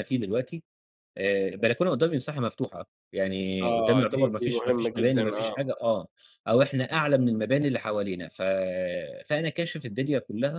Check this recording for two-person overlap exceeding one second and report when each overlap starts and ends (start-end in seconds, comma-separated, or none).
3.7-5.5